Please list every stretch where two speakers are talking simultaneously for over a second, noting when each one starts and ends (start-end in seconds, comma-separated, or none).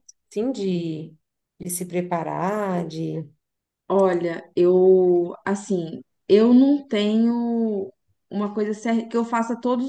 none